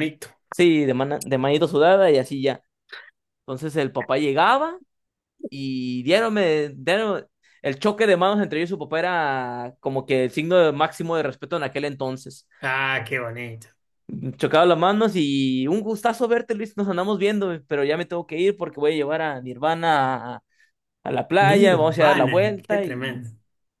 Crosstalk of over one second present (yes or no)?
yes